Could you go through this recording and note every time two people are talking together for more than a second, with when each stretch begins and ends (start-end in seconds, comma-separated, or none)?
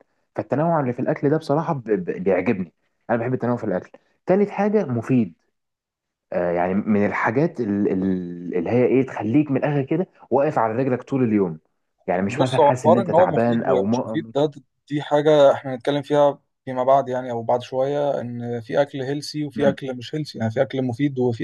12.3-14.3